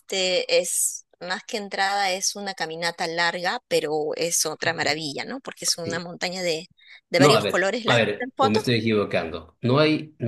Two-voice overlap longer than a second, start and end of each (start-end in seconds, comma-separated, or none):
7.2-8.6